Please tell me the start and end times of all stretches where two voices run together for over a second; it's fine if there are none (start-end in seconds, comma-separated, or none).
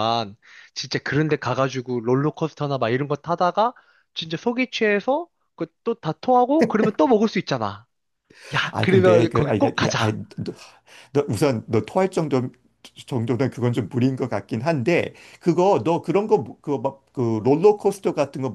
8.7-10.2